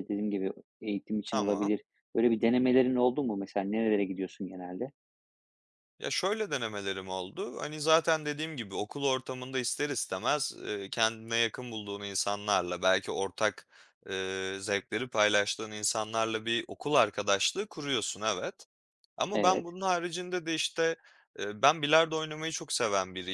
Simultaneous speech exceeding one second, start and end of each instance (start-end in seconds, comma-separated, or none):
none